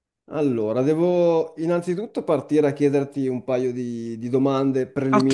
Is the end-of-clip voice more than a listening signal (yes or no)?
no